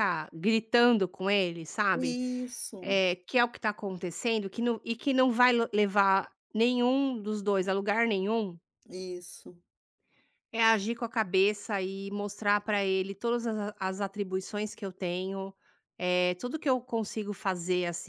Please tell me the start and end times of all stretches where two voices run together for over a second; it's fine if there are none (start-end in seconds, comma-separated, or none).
none